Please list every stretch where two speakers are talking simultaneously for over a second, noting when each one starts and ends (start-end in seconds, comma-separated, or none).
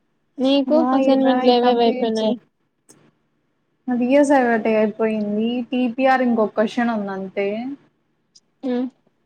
0.8-2.3